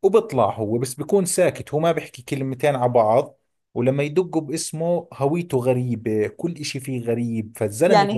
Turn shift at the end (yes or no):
yes